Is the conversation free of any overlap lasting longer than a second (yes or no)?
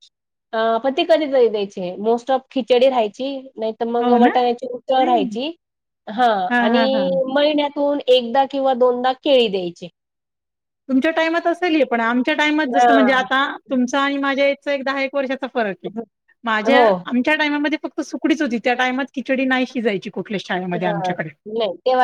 yes